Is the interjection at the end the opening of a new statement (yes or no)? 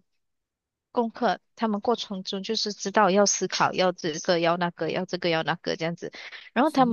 no